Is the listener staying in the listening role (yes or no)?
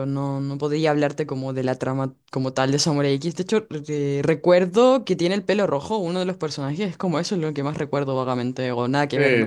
no